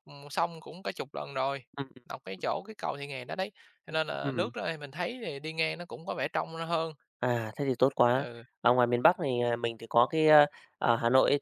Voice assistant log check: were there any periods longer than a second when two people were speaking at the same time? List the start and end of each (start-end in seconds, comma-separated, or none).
none